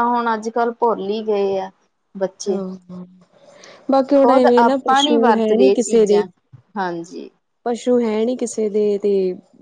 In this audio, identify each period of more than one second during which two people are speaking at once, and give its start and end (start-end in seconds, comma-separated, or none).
4.1-6.2